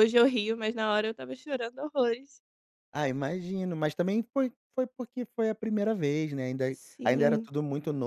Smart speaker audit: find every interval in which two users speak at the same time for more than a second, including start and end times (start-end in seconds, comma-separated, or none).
none